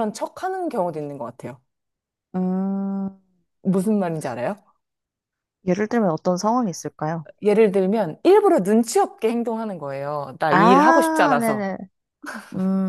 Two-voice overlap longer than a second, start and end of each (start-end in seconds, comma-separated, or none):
10.5-11.7